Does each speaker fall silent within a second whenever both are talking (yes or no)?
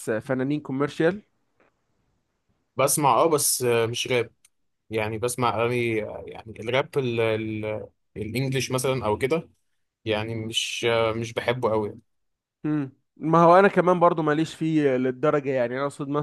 yes